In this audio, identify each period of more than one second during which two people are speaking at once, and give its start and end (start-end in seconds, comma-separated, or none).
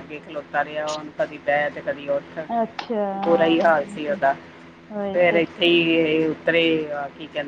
none